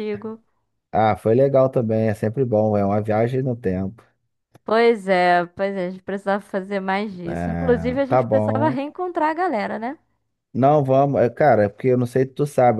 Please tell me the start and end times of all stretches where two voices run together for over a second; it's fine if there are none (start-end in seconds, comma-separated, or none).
7.2-8.8